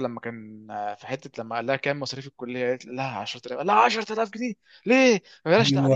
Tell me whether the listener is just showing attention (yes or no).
no